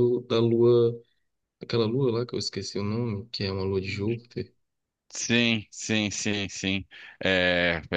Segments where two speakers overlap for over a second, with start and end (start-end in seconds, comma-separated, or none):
none